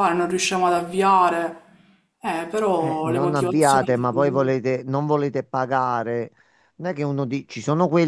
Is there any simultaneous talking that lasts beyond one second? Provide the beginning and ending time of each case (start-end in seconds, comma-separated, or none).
2.8-4.1